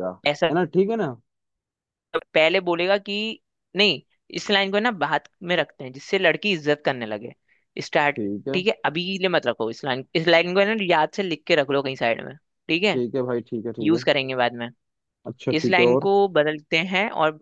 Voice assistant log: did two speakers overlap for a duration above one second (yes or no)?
no